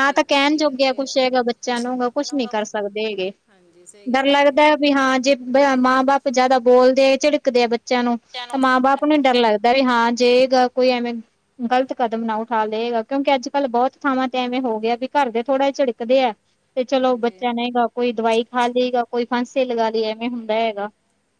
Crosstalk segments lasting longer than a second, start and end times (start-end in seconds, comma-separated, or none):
none